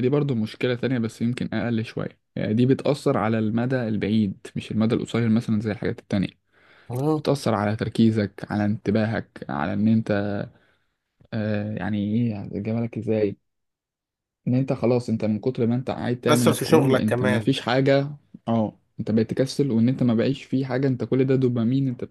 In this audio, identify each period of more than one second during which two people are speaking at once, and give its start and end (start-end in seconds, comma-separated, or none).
16.3-17.5